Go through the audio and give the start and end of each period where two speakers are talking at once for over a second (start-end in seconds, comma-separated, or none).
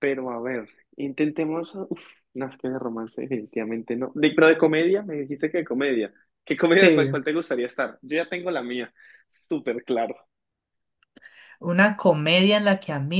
none